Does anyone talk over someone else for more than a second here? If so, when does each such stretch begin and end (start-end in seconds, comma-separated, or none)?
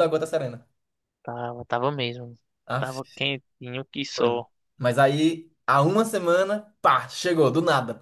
none